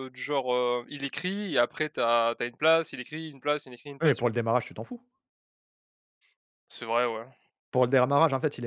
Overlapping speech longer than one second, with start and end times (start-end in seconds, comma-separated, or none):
none